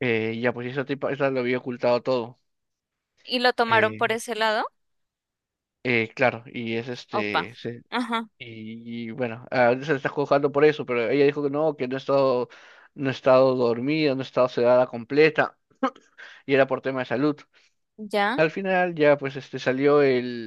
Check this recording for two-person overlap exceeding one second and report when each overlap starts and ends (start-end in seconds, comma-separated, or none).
none